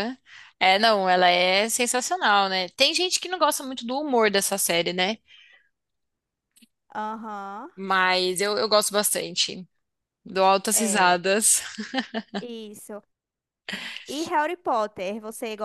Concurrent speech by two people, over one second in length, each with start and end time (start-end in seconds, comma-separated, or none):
none